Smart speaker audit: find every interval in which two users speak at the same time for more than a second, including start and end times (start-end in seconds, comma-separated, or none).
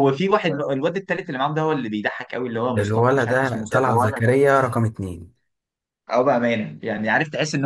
2.8-4.3